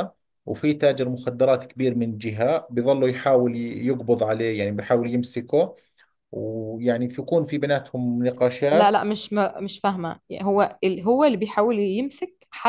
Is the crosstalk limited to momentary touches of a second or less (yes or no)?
yes